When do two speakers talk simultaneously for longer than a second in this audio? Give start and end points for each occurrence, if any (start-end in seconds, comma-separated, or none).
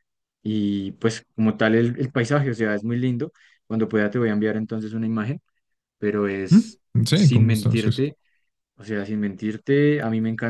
6.5-8.0